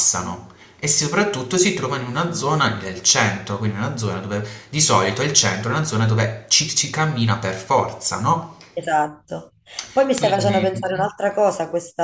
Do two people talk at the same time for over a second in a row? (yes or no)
yes